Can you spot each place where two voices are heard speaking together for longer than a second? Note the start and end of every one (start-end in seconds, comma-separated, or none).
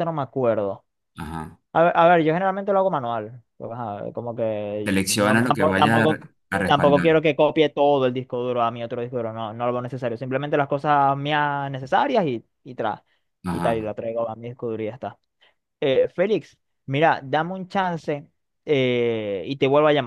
4.8-7.1